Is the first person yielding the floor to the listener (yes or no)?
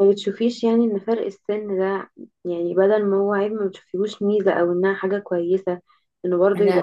no